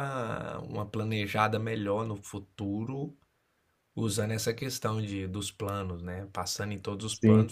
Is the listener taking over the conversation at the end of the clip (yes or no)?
no